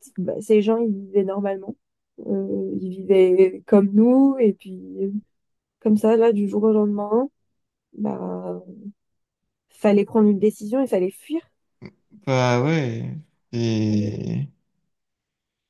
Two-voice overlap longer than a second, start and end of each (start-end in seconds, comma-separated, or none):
none